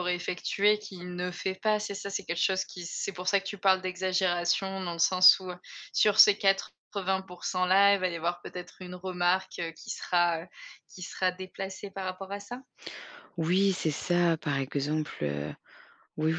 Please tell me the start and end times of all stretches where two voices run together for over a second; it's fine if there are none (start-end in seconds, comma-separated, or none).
none